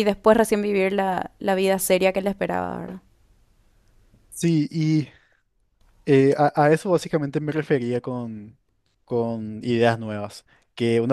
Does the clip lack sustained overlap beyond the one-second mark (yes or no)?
yes